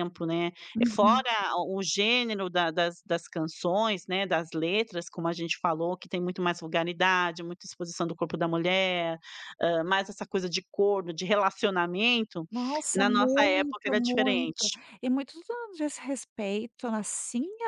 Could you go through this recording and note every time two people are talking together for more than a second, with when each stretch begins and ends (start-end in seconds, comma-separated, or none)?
12.9-14.8